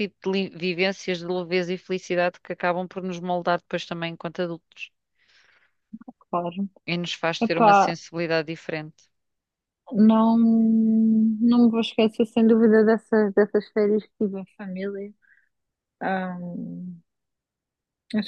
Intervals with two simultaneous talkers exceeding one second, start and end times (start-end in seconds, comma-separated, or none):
none